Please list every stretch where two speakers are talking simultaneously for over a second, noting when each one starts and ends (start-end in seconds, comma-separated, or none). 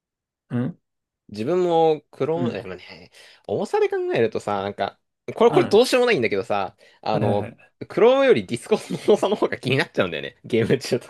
none